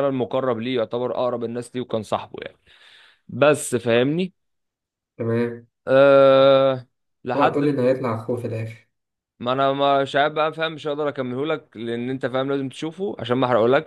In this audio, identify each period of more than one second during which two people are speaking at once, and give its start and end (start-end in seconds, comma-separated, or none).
none